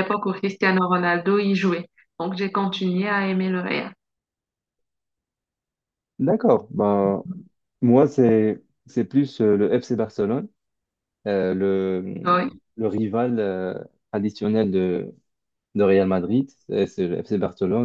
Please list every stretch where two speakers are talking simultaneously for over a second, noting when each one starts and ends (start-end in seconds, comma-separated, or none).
none